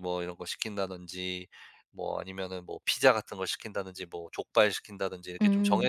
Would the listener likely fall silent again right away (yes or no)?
yes